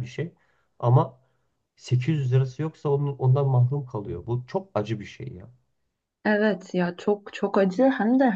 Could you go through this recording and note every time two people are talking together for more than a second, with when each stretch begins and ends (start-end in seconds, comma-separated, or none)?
none